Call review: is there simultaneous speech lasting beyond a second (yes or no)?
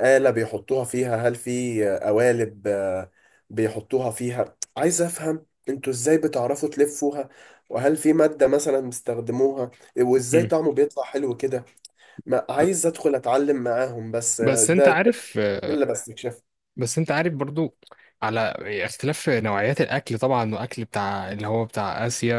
no